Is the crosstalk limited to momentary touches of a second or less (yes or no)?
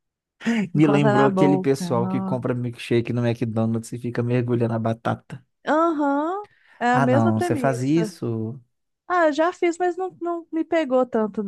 no